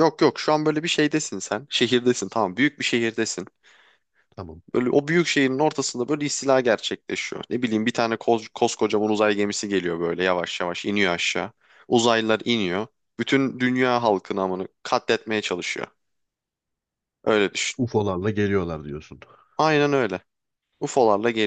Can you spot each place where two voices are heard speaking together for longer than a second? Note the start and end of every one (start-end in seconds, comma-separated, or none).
none